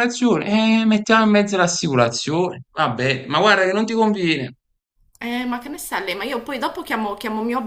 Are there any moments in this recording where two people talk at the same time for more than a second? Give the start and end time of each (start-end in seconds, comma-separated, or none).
none